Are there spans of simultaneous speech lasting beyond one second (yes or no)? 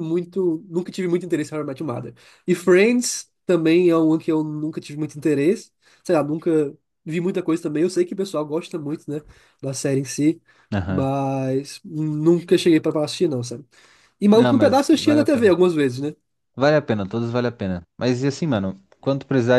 yes